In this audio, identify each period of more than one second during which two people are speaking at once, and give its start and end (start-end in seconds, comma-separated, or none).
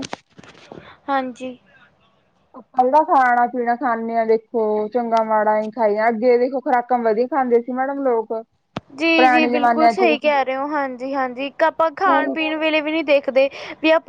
9.0-10.3